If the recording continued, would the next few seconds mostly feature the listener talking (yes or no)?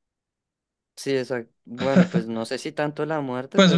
yes